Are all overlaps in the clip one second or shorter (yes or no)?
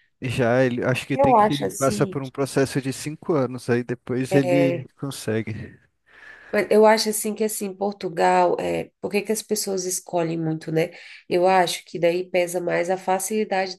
no